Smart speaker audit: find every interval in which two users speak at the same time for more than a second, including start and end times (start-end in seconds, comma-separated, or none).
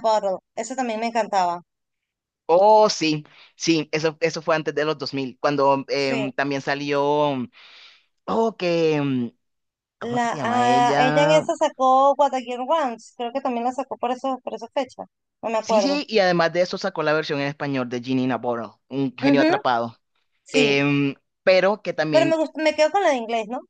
10.0-11.5